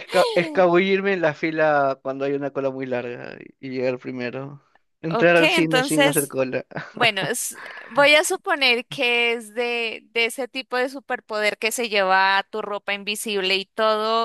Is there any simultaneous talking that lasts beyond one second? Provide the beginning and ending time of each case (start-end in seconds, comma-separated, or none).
5.1-6.4